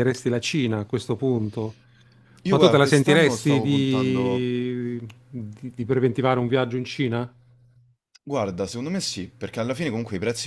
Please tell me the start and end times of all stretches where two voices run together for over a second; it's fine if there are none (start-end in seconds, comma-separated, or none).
2.5-4.5